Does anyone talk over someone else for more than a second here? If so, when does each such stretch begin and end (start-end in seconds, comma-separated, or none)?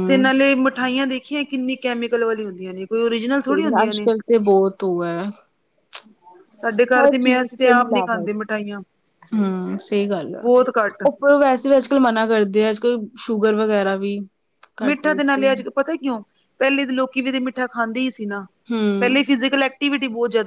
7.0-8.3